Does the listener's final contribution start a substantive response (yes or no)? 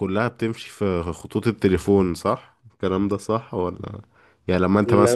no